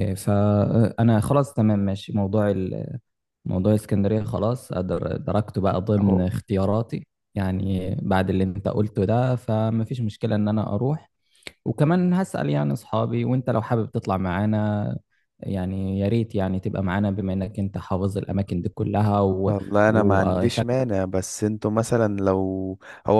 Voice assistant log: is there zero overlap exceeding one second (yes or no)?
no